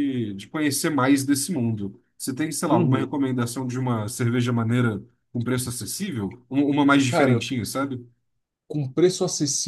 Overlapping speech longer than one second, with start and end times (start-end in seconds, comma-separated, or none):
none